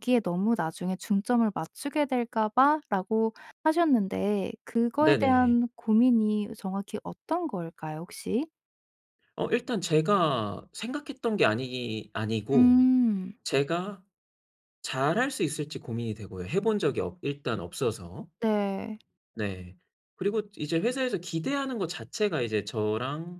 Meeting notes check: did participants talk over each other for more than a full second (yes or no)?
no